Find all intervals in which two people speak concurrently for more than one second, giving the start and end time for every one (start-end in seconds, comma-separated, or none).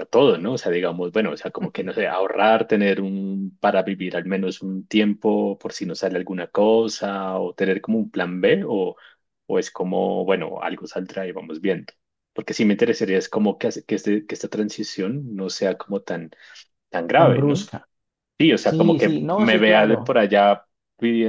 18.6-20.1